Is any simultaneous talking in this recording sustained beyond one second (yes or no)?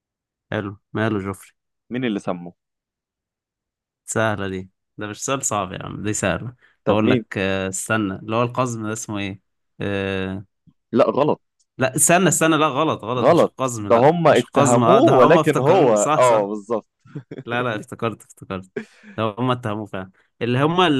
yes